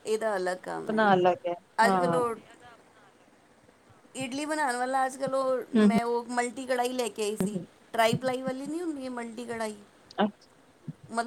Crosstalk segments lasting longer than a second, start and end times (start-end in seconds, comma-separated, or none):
none